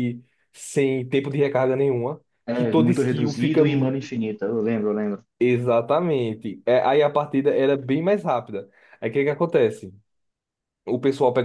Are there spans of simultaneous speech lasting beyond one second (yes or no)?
yes